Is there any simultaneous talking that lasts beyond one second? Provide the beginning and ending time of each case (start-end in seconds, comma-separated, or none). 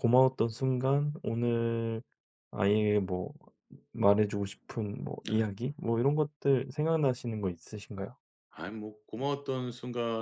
none